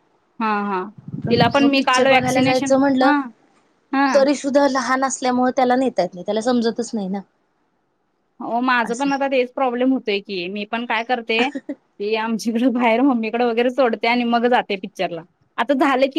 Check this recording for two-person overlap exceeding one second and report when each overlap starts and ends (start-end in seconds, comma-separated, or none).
1.3-3.1